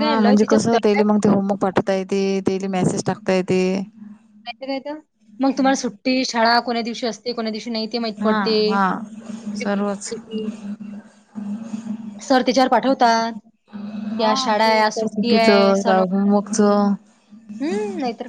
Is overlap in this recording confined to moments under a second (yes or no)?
no